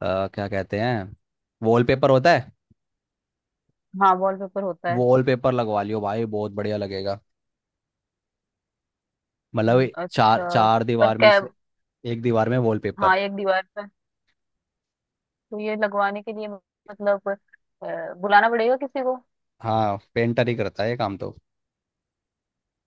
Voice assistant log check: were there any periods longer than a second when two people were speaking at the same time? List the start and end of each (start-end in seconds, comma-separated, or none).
9.7-11.4